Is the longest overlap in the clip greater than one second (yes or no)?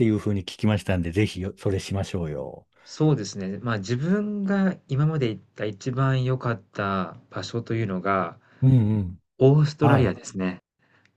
no